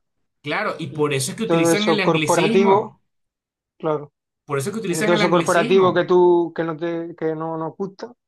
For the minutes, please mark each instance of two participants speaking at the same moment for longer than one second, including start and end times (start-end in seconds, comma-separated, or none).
0.9-3.0, 4.8-6.1